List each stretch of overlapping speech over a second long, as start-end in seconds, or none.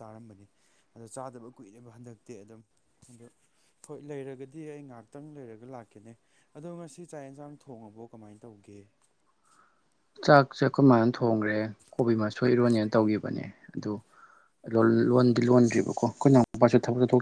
none